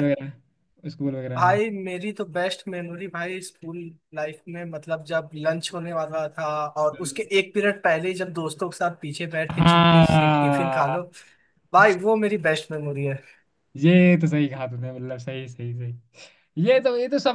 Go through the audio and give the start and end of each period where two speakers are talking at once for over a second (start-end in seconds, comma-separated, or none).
9.6-11.0